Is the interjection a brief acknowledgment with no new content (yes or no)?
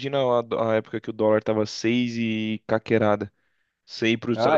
yes